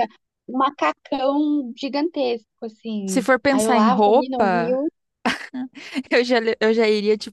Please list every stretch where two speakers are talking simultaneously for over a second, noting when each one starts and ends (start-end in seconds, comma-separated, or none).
3.1-4.8